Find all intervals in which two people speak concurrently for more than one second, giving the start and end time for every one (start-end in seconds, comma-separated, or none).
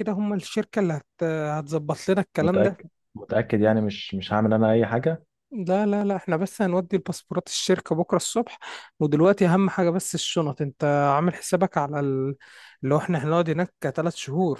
none